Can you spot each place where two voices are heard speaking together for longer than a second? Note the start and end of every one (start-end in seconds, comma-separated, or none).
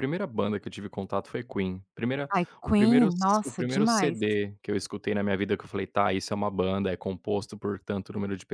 2.3-4.2